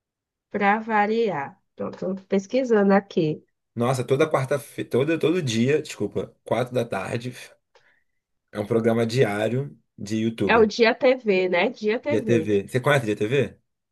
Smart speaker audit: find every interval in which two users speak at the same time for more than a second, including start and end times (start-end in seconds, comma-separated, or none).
none